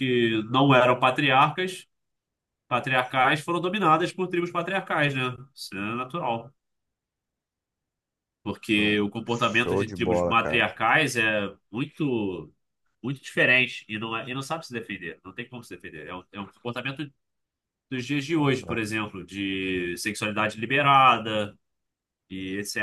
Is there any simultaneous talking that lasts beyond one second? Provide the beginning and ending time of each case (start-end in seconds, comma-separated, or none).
8.7-10.7